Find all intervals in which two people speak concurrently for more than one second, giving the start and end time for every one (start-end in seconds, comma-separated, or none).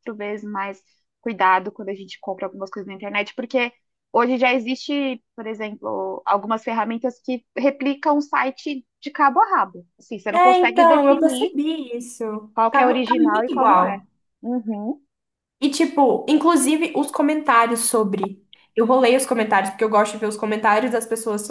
10.3-11.5, 12.7-14.0